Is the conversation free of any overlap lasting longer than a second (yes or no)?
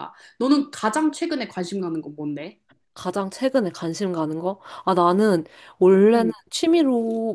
yes